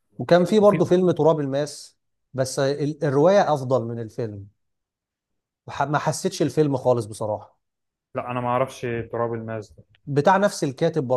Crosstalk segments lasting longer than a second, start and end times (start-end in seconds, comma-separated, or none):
none